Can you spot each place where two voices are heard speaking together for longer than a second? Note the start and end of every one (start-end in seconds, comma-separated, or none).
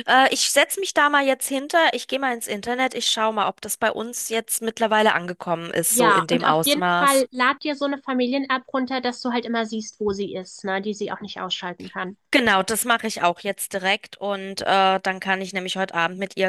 5.9-7.2